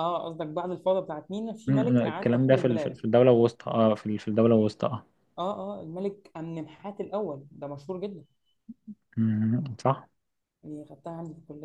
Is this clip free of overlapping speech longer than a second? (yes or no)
no